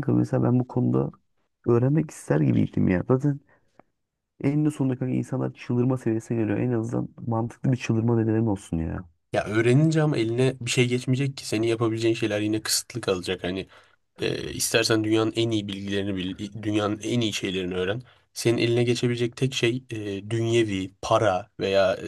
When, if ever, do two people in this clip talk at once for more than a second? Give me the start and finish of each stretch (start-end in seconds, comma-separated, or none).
none